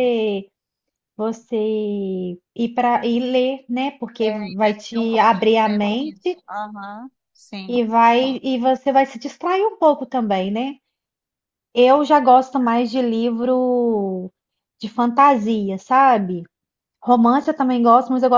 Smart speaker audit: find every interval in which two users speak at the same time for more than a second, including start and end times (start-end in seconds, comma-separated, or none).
4.2-6.4